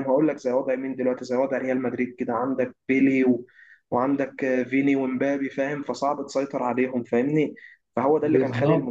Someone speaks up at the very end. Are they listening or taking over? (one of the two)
taking over